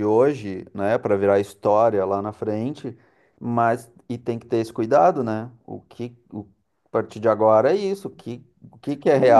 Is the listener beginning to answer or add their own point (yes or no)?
yes